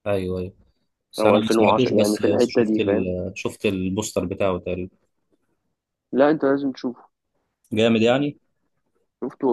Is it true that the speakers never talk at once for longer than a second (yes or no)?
no